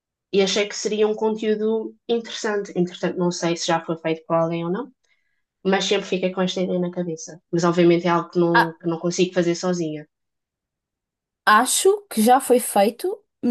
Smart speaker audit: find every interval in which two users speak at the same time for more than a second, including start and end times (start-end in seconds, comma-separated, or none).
none